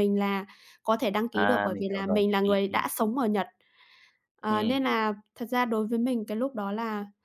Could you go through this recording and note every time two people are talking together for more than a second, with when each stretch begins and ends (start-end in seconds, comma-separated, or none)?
1.3-2.8